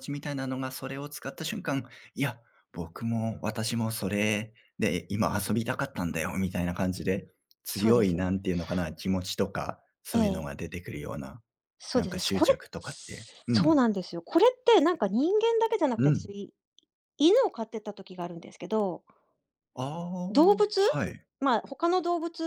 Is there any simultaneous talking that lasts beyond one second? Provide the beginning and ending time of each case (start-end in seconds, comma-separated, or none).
11.9-13.8